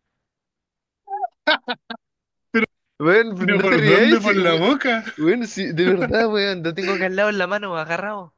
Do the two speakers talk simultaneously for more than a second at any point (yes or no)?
yes